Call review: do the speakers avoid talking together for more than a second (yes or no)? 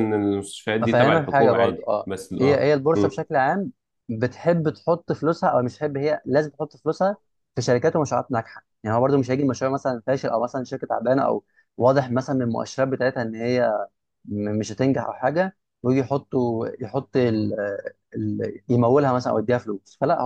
no